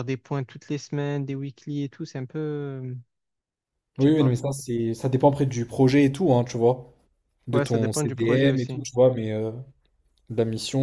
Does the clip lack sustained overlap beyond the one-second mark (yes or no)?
no